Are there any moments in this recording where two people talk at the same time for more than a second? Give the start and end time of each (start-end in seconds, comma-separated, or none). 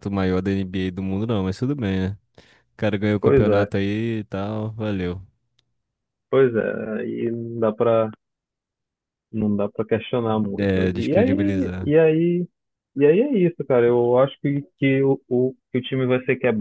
10.6-11.9